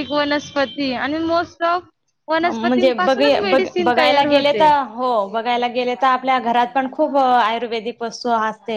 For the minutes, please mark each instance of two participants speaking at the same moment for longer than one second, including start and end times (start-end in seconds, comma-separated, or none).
2.4-4.6